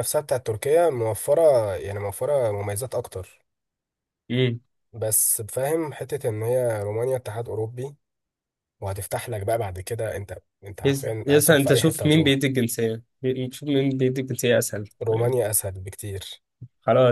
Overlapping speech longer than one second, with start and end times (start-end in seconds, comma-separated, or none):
10.8-12.4